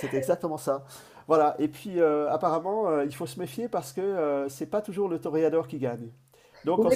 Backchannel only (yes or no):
yes